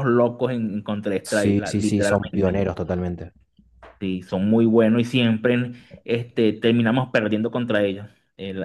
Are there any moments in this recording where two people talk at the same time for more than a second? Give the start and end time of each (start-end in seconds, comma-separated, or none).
1.2-2.7